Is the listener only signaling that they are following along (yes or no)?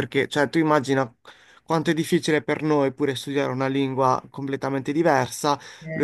yes